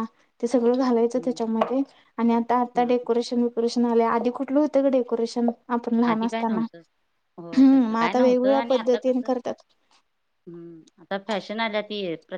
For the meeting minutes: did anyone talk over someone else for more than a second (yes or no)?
yes